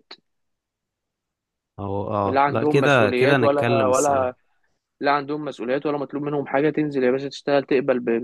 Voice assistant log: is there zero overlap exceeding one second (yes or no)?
no